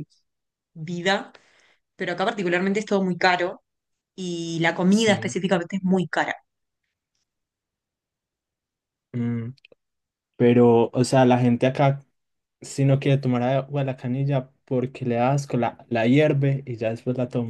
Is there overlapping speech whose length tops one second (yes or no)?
no